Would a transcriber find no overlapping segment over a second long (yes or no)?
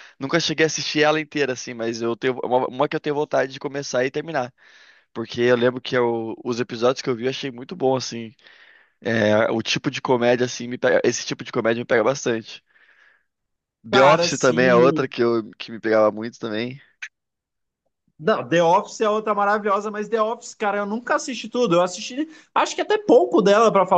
no